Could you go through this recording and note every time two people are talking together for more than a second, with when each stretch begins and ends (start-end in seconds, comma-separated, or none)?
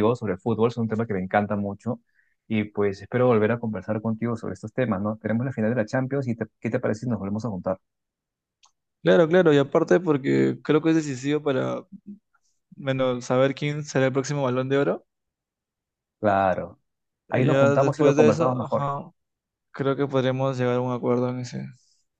17.3-18.9